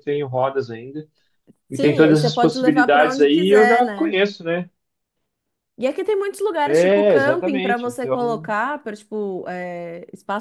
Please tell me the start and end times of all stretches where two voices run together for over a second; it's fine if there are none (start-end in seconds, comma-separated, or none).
1.7-4.2, 6.7-8.5